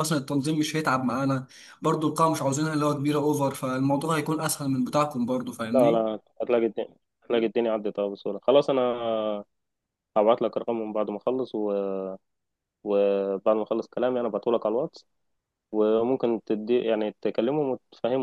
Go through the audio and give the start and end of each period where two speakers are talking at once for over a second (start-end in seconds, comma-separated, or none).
none